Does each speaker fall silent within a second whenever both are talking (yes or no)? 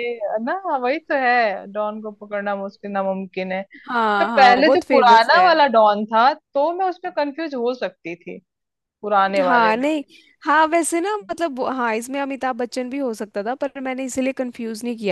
no